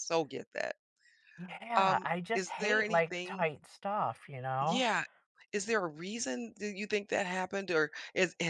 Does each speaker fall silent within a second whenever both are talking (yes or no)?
no